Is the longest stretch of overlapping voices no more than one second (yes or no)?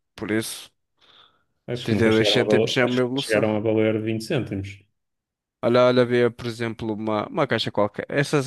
no